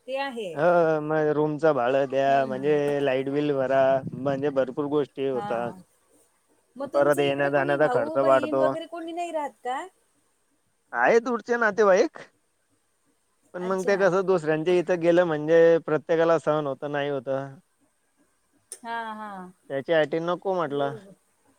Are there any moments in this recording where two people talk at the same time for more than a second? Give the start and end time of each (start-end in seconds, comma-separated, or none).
6.9-8.6